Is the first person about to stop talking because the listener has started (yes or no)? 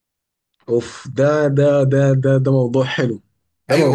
yes